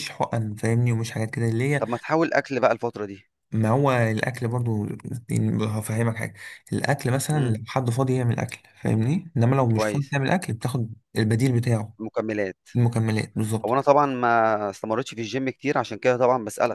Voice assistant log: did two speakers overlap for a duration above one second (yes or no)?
no